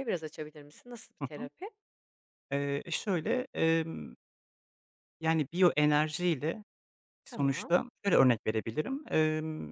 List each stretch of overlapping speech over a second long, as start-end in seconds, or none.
none